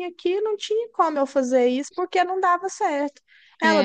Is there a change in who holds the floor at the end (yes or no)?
no